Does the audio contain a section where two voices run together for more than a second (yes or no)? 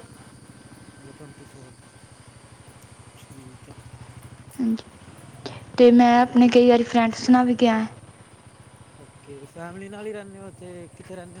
no